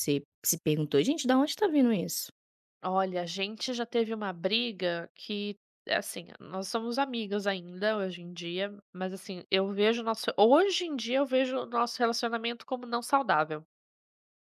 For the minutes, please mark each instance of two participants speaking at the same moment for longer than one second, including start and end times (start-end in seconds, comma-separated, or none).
none